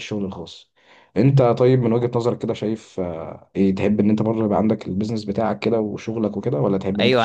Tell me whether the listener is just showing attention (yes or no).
no